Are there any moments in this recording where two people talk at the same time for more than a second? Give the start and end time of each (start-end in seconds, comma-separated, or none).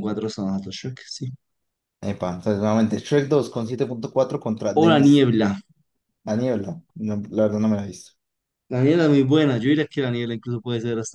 none